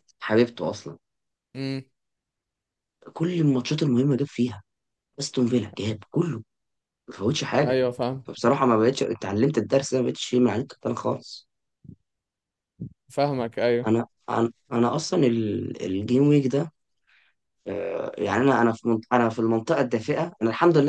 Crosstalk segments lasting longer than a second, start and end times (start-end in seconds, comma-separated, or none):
none